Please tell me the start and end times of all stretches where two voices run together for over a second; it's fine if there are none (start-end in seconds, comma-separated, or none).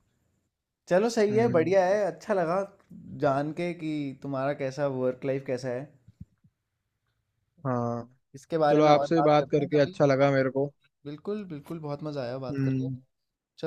8.7-10.0